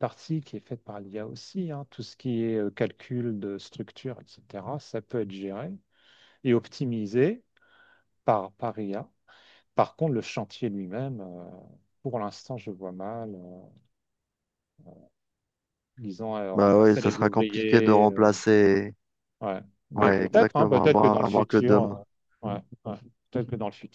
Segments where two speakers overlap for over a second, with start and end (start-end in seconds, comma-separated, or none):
16.5-18.3, 20.0-22.0